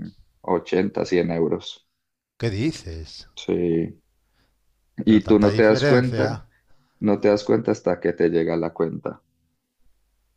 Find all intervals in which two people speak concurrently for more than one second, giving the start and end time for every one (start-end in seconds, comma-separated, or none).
5.0-6.3